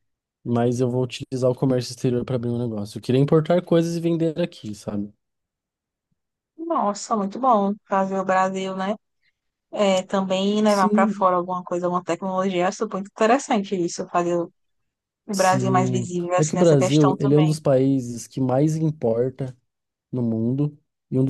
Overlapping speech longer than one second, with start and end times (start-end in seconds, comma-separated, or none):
15.3-17.6